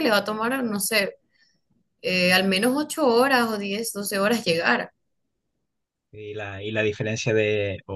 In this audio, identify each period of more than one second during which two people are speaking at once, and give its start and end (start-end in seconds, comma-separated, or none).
none